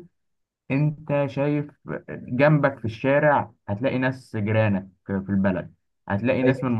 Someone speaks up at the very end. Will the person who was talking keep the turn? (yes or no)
yes